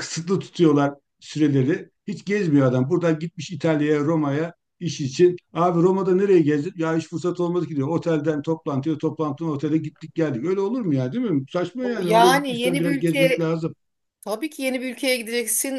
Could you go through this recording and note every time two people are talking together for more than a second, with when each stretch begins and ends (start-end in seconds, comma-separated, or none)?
12.0-13.5